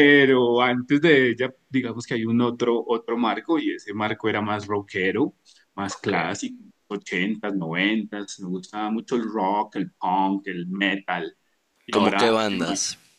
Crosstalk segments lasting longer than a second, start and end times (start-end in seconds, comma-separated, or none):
none